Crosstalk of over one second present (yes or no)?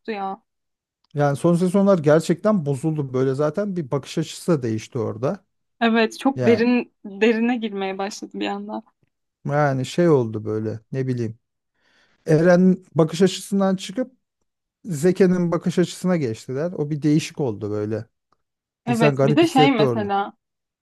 yes